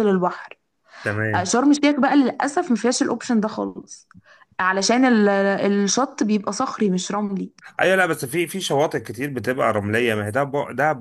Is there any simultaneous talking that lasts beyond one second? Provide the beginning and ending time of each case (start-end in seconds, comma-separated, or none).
none